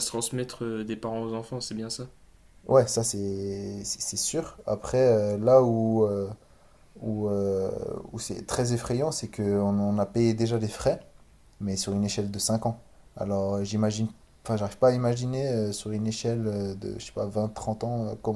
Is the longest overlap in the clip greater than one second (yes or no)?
no